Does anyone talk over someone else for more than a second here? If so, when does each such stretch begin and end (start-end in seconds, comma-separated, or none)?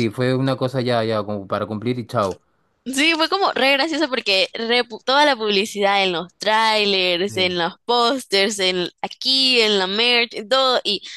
none